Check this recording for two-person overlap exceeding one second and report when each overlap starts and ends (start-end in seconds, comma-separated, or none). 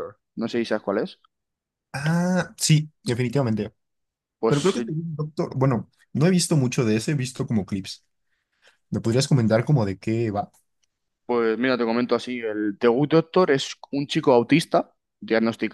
none